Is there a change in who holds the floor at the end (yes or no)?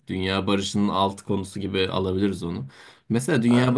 no